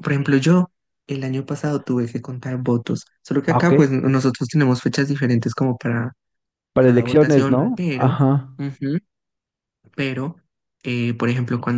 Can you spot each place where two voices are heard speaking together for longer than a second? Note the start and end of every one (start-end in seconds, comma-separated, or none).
6.8-8.2